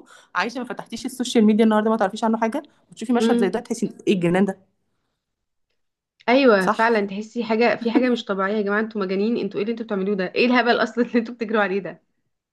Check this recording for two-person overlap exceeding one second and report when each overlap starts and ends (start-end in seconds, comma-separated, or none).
none